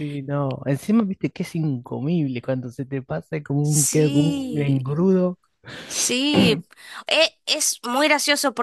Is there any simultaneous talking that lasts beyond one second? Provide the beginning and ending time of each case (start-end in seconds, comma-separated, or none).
3.6-5.0